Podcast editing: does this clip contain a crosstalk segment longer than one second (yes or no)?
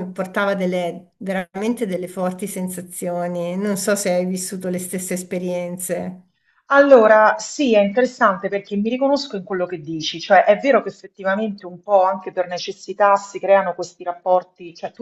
no